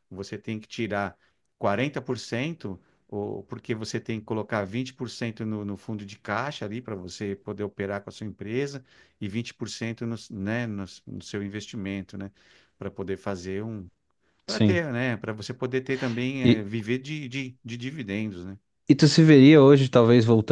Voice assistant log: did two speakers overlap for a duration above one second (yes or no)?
no